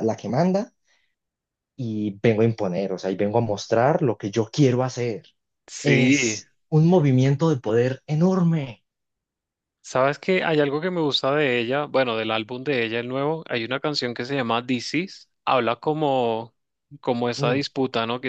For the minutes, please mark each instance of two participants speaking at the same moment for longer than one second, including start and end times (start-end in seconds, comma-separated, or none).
none